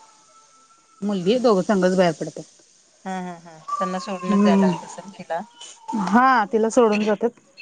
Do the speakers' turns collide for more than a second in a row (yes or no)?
no